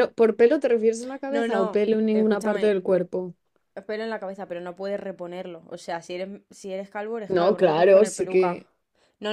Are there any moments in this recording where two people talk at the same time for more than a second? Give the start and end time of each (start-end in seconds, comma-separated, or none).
1.3-2.8, 7.3-8.6